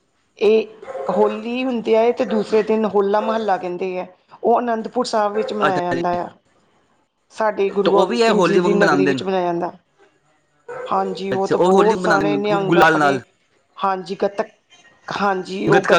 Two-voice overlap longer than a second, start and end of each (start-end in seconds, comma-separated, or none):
7.8-9.2, 11.3-13.2